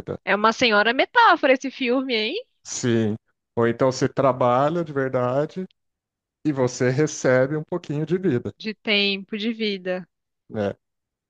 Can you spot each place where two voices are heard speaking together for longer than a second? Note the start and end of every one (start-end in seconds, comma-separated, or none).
none